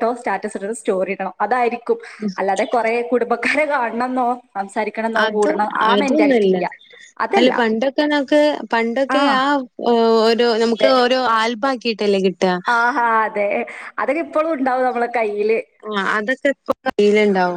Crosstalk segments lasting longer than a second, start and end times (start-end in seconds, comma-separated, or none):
none